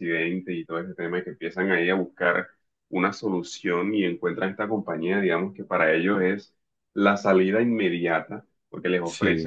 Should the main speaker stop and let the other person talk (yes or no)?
no